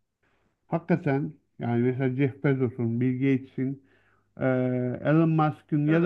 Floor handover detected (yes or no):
no